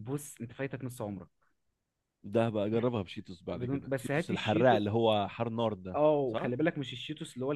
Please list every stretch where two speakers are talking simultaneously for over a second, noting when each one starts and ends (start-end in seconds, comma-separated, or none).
3.5-4.8